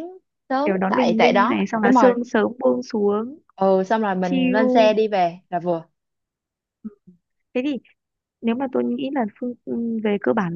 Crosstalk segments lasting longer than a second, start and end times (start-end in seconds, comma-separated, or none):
0.7-2.1